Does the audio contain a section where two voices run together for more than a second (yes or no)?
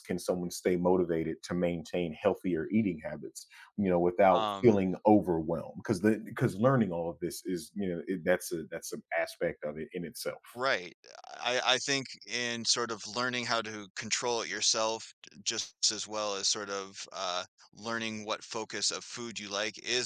no